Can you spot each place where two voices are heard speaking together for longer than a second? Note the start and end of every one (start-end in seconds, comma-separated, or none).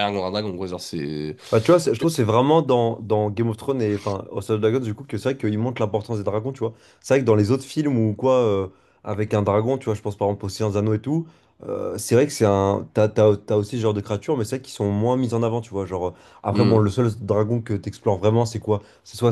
none